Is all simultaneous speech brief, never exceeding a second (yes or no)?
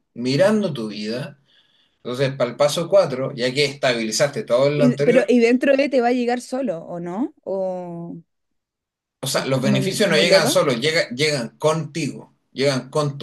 no